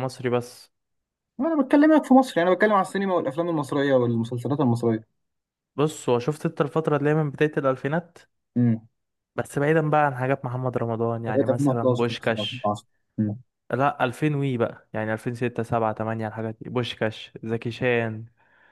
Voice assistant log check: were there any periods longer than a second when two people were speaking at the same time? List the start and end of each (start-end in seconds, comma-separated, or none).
11.3-12.7